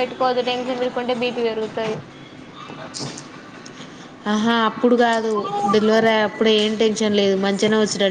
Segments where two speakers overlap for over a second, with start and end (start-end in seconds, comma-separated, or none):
none